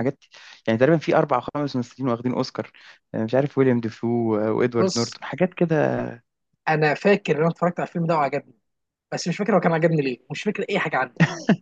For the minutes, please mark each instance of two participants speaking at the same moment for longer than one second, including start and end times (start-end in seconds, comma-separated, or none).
none